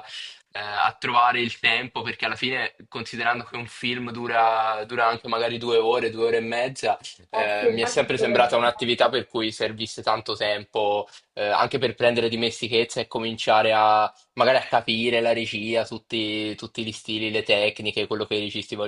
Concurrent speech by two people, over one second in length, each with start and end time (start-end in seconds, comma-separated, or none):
7.3-8.9